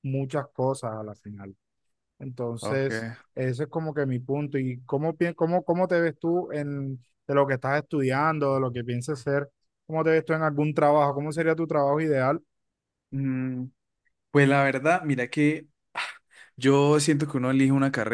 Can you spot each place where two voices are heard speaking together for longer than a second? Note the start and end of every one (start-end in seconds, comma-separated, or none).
none